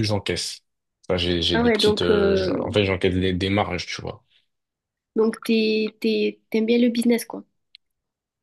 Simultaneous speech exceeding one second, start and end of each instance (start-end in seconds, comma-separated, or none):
1.5-2.8